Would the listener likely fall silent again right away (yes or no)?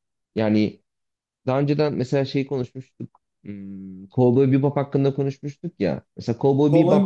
no